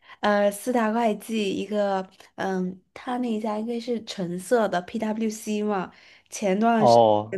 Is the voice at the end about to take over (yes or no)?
no